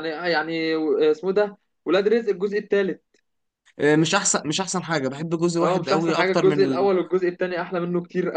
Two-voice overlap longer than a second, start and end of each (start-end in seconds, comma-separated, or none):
5.6-6.9